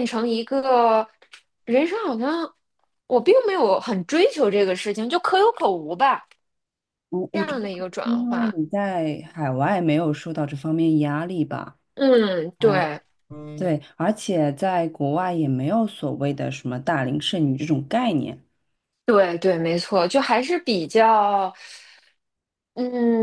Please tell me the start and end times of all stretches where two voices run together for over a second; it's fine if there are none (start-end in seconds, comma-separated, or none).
7.3-8.5